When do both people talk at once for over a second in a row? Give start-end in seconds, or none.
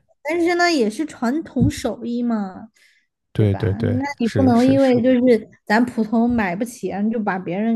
3.4-5.0